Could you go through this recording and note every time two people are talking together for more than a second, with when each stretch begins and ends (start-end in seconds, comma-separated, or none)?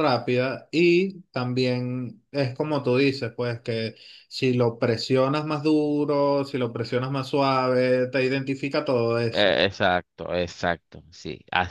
none